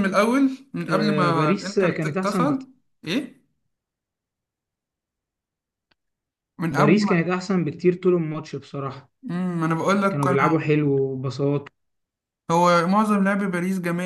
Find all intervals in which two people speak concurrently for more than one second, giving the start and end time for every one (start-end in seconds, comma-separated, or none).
0.9-2.6